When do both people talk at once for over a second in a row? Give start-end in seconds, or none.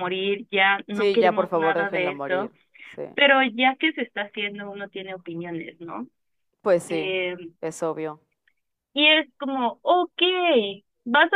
0.9-2.5